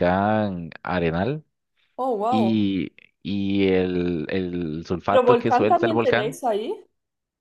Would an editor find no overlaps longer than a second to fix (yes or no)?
no